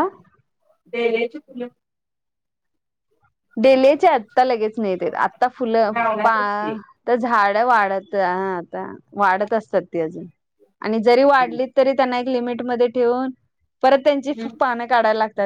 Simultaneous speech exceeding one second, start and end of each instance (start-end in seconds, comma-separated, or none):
none